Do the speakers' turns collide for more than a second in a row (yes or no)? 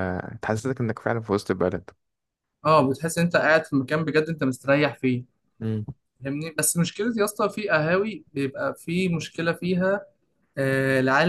no